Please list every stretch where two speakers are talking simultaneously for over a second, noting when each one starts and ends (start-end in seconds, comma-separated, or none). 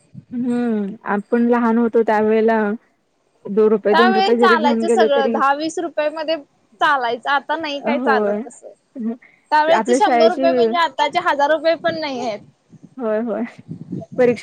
3.9-5.3